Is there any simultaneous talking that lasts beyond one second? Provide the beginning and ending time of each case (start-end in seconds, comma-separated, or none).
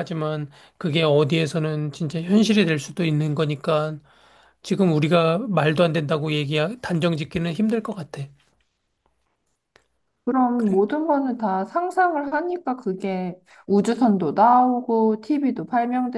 none